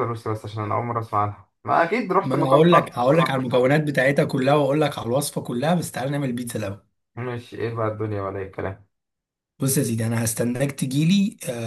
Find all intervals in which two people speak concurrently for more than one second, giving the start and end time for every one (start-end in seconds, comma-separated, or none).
2.1-3.7